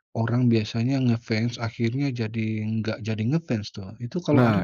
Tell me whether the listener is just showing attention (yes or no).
no